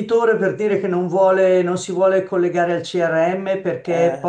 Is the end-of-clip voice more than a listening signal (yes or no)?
no